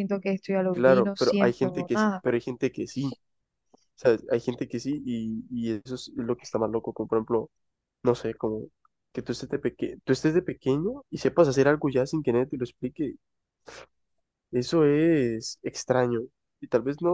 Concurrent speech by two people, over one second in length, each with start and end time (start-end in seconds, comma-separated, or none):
0.7-2.2